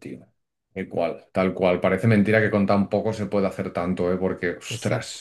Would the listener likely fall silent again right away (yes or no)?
yes